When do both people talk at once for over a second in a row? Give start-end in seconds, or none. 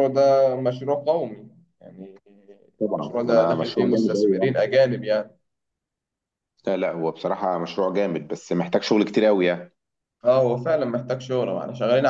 3.0-4.5